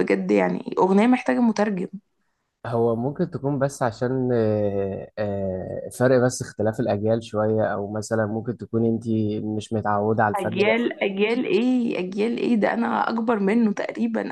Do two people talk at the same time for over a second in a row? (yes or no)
no